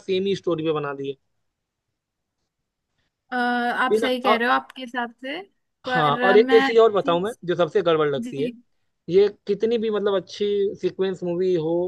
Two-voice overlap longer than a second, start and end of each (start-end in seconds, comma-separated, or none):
5.9-7.4